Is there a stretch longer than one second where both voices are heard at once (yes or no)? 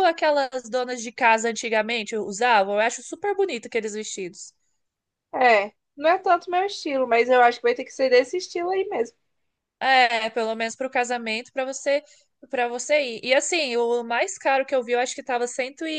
no